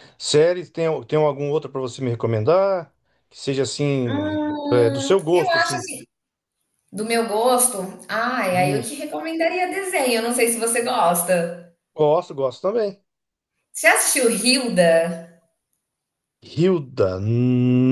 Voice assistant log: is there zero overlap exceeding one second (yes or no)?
no